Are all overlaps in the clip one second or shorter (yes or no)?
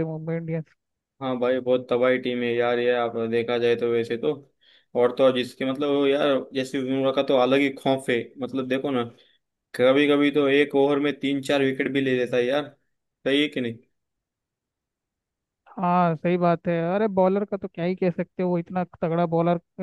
yes